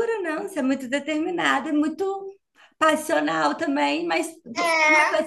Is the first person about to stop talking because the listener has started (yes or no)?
yes